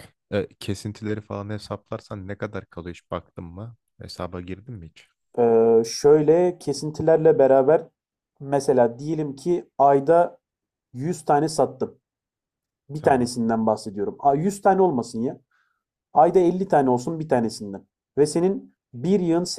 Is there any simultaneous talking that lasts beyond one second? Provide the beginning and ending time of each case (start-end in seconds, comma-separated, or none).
none